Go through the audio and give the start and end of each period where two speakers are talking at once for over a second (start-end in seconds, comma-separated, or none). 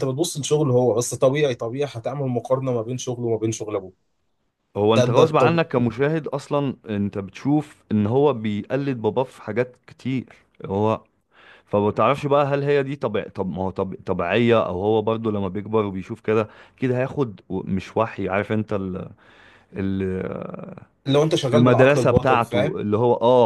21.5-22.8